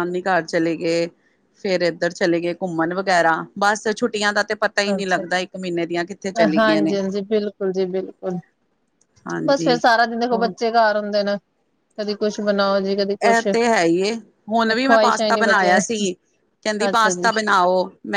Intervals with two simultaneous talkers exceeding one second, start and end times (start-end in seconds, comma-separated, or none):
14.7-15.9